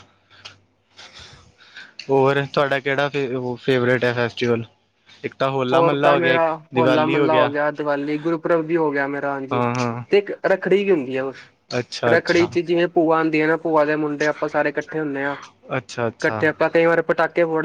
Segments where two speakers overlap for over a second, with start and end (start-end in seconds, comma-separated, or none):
none